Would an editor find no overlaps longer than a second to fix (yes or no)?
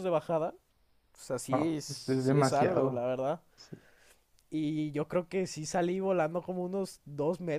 no